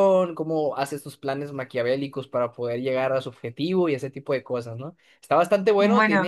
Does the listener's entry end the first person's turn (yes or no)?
no